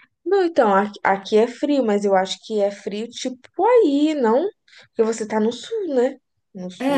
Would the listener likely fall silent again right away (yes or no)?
no